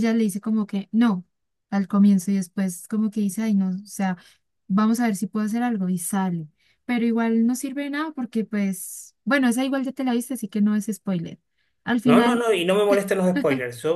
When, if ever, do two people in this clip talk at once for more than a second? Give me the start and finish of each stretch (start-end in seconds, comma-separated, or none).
none